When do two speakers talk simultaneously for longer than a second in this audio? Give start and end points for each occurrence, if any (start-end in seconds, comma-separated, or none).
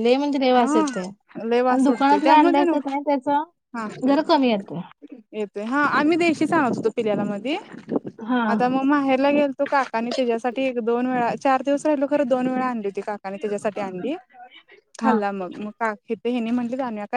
1.7-2.9